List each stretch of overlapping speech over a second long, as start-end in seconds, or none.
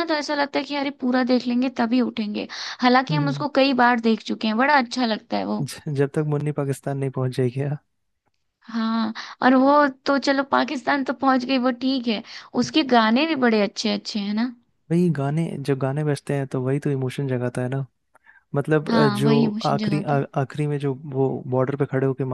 18.9-20.2